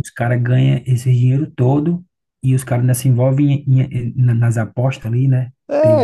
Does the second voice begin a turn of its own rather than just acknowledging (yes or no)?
yes